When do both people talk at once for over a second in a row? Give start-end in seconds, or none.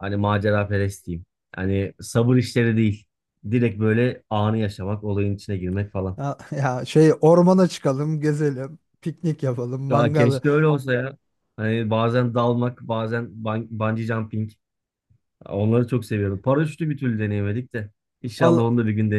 none